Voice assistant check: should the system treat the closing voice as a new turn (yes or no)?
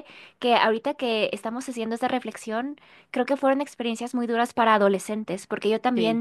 no